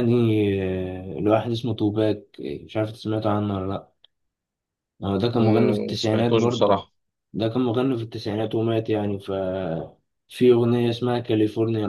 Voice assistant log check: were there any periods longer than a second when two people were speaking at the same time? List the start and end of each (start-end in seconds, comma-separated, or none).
5.3-6.8